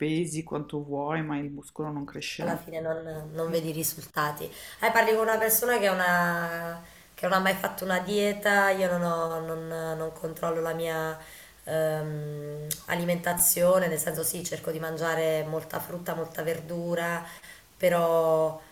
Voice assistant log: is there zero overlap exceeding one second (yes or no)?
yes